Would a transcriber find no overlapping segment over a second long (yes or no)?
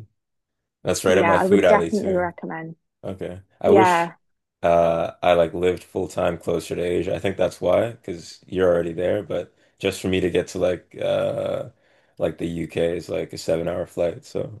no